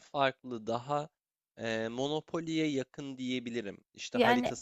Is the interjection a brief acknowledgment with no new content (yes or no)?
yes